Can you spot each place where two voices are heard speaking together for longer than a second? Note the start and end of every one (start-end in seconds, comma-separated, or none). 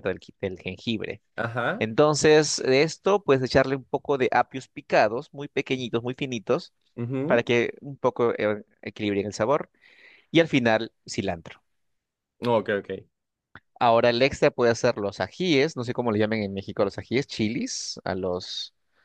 none